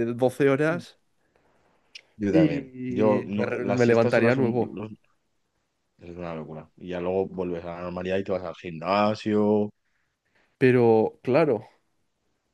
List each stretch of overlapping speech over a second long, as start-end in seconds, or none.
2.3-4.8